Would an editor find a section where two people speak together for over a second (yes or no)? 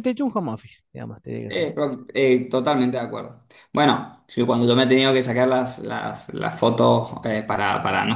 no